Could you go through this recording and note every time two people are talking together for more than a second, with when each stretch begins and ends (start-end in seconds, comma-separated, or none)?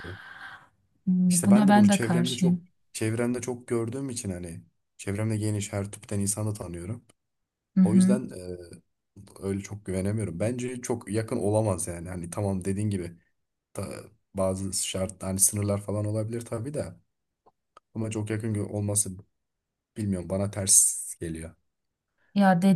1.3-2.6